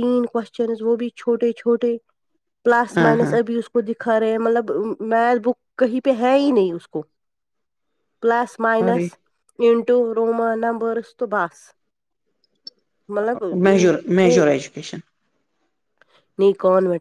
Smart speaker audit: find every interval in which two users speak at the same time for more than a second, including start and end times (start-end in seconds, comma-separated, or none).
none